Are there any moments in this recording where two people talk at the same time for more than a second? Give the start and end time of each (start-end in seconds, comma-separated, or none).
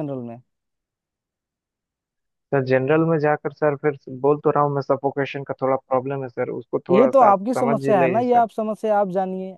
6.9-8.4